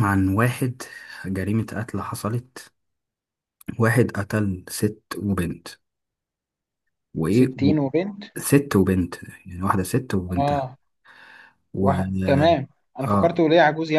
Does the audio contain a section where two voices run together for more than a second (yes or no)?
no